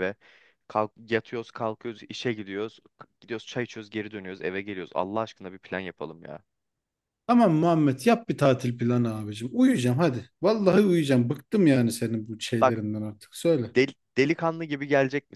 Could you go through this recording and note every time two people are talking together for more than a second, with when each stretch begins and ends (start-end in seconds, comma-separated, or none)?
none